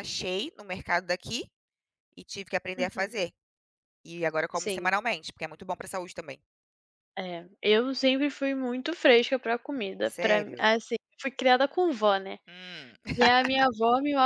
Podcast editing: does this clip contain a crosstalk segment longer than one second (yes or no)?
no